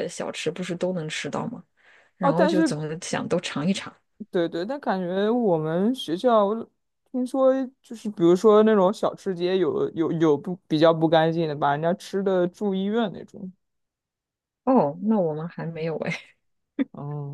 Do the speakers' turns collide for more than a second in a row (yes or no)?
no